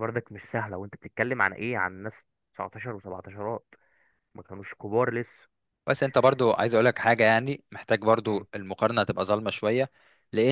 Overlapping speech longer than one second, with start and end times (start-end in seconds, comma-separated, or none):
none